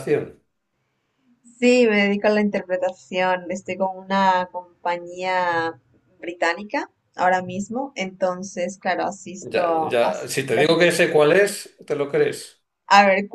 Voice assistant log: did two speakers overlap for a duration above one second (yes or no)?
yes